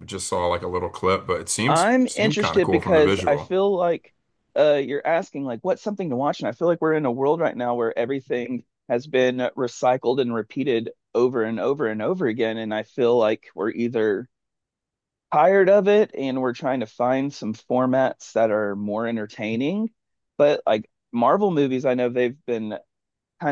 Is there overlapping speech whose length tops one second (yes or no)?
yes